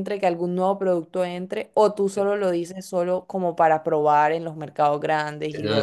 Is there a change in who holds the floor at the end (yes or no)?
yes